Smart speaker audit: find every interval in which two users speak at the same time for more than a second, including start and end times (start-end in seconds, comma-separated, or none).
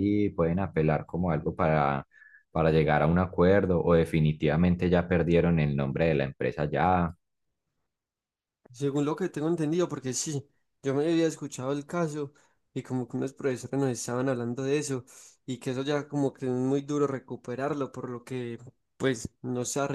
none